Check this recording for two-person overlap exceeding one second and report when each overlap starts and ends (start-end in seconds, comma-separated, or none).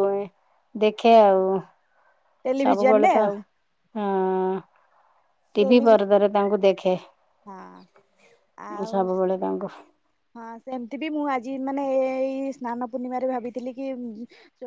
none